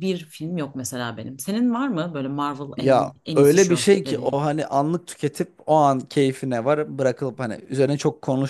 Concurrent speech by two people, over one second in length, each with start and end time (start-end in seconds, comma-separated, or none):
2.8-4.4